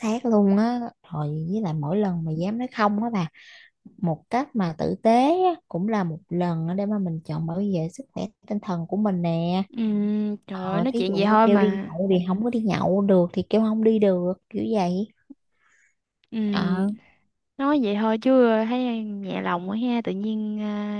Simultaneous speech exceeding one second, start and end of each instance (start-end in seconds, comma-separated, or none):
10.5-11.9